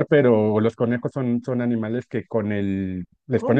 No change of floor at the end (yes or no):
yes